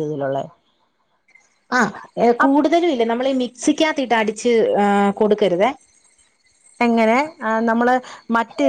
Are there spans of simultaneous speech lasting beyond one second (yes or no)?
no